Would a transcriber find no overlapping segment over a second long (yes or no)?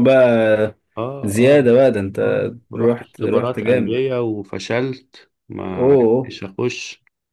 no